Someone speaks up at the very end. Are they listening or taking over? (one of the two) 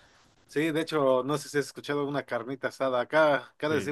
listening